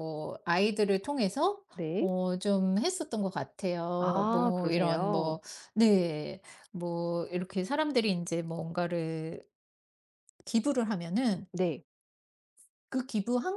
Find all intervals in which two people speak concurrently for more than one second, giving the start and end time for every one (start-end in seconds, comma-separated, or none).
4.0-5.4